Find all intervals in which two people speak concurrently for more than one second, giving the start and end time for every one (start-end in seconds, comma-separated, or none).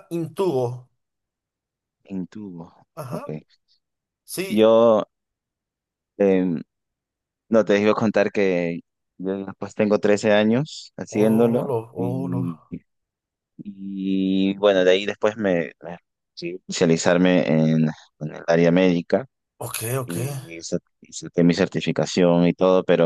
11.1-12.4